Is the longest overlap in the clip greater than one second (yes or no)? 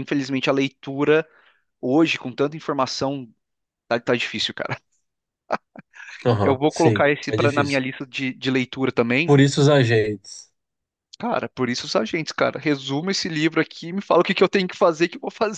yes